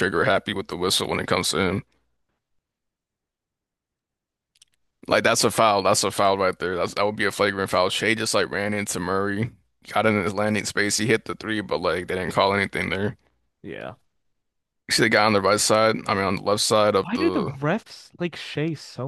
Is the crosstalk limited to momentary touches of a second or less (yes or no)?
yes